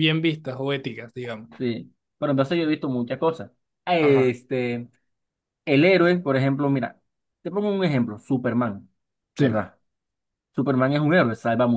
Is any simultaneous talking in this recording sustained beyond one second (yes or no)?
no